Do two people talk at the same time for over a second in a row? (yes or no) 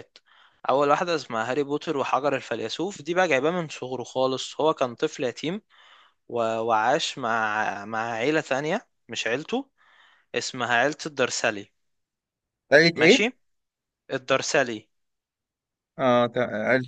no